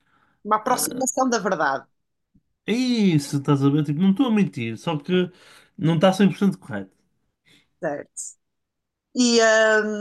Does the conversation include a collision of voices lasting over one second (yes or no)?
no